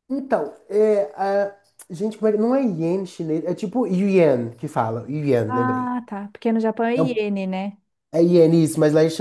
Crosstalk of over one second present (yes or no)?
no